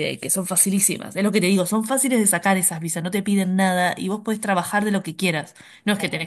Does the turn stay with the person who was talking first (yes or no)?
yes